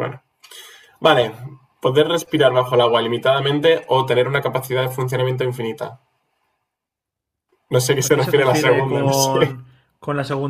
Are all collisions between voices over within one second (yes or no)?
no